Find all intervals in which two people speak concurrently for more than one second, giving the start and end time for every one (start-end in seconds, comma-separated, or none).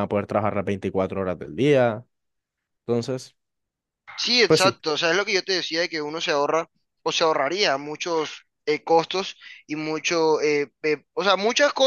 none